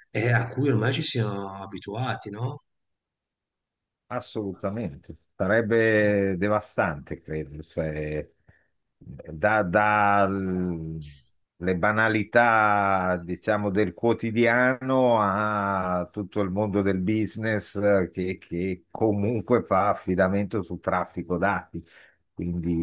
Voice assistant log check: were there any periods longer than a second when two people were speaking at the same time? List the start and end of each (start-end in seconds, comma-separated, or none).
none